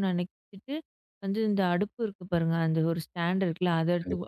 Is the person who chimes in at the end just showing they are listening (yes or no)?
yes